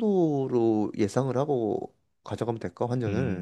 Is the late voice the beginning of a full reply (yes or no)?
yes